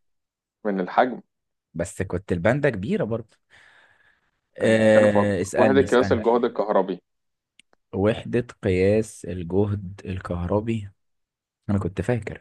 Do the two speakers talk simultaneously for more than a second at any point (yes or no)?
yes